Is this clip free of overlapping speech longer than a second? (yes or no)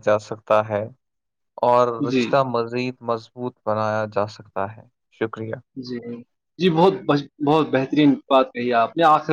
yes